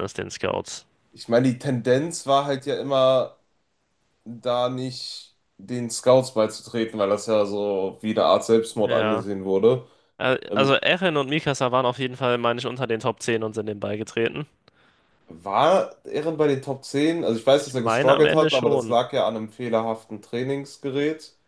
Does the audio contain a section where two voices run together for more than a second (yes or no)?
yes